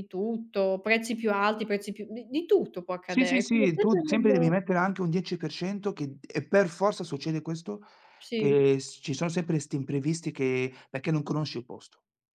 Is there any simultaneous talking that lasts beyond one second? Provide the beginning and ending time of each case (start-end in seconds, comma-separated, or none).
3.1-4.5